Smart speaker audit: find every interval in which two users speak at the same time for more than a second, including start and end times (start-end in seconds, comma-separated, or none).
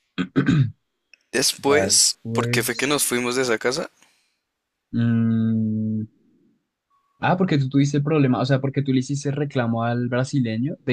1.6-2.9